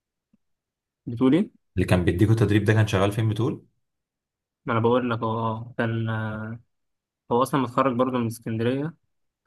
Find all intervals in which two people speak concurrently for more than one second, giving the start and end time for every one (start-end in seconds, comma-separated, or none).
none